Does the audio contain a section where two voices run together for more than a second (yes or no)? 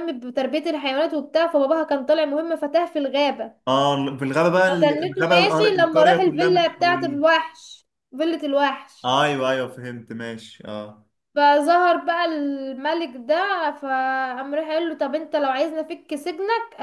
yes